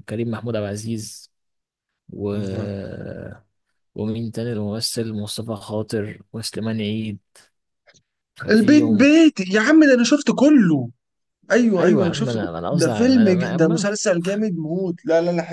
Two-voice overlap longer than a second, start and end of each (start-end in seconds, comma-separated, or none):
11.8-13.9